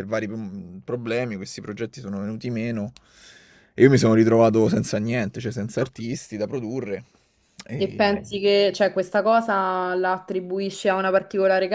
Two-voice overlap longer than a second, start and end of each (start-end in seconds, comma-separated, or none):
none